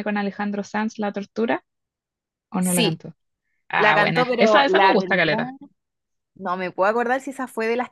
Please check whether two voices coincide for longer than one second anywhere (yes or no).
yes